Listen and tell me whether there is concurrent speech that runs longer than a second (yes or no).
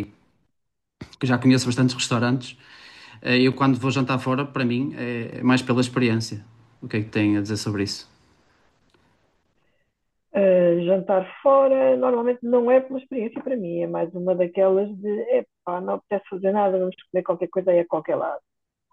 no